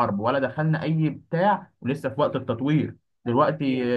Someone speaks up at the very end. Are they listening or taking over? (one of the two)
listening